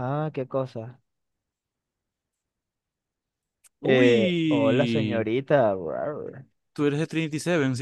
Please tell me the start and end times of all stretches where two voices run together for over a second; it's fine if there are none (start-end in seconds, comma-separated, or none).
3.8-5.3